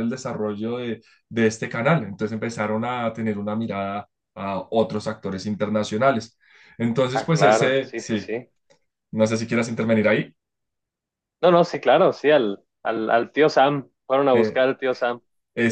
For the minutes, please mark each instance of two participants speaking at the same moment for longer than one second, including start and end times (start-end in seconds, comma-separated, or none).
7.1-8.3